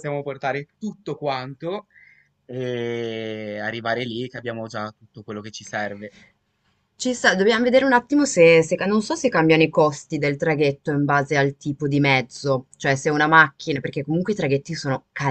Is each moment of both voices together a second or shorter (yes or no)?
yes